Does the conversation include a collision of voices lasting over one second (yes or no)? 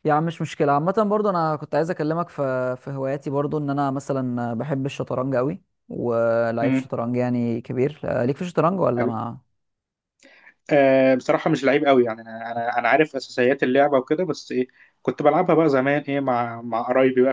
no